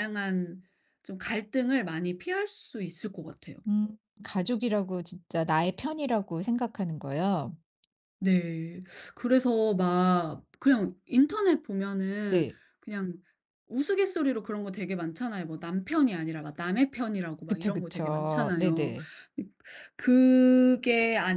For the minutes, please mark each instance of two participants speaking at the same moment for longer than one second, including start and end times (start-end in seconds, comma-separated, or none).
17.5-18.9